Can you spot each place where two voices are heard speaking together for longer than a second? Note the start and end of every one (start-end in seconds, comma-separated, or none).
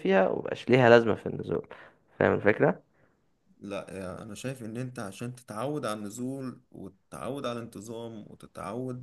none